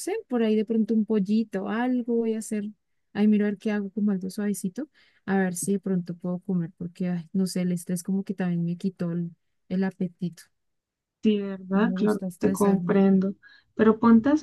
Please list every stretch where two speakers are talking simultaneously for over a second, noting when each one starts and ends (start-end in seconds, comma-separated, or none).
11.7-13.0